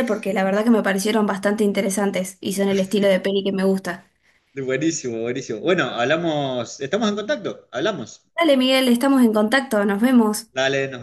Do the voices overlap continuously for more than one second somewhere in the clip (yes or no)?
no